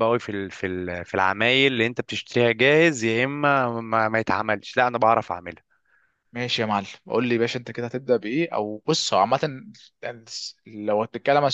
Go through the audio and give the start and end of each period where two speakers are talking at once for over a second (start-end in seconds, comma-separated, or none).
none